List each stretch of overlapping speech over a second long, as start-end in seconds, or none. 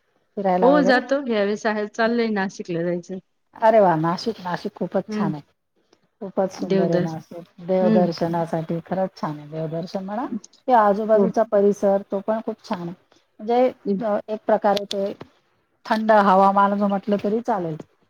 none